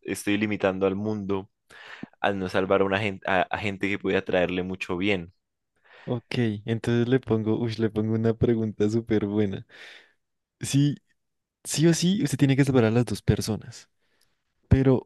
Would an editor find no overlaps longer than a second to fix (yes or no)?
yes